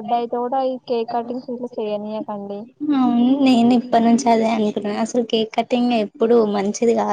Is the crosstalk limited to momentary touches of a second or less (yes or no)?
yes